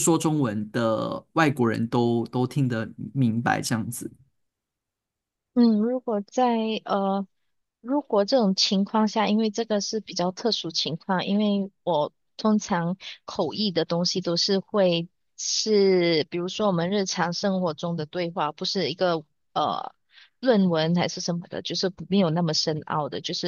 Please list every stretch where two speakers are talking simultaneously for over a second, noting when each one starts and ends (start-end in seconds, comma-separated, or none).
none